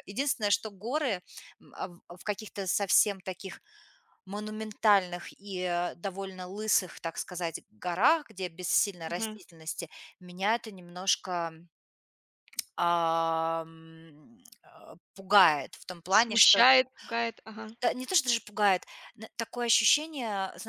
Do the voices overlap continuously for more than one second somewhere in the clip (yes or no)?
no